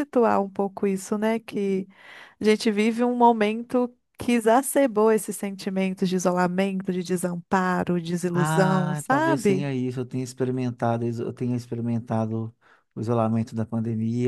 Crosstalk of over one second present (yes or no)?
yes